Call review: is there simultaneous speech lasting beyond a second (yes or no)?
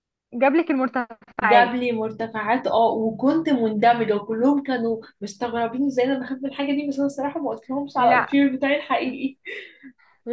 no